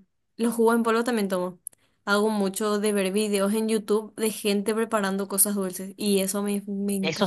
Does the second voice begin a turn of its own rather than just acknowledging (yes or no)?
yes